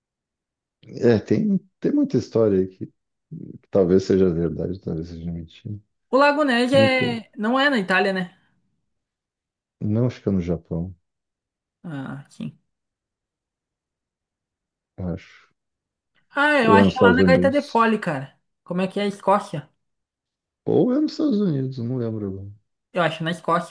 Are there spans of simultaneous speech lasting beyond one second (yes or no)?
yes